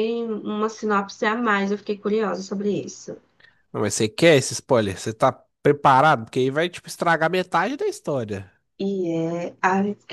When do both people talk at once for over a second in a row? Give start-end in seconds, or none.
none